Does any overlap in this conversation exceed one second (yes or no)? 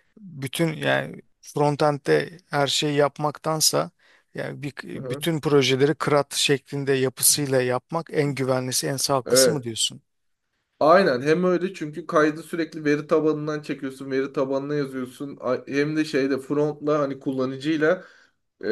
no